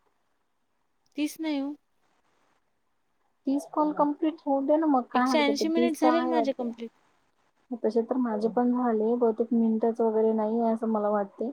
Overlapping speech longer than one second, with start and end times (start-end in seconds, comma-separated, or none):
5.2-6.9